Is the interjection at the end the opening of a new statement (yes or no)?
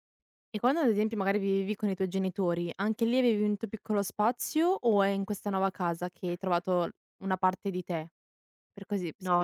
yes